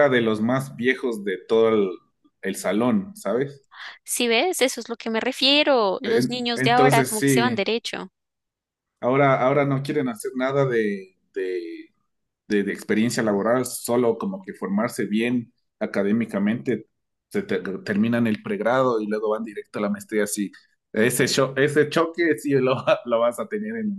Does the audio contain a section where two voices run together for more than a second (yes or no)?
yes